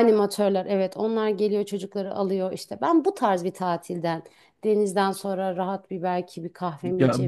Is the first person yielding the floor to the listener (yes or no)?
yes